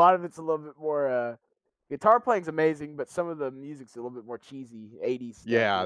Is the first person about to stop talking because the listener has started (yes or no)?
yes